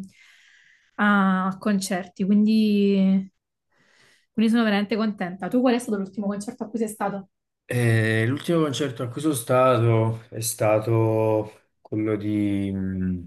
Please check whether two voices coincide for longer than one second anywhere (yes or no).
no